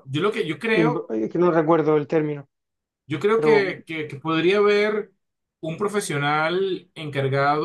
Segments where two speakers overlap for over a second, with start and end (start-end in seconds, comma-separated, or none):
none